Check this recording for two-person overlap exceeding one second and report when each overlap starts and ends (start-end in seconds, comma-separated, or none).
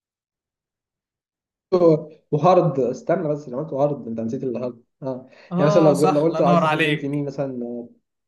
5.5-7.2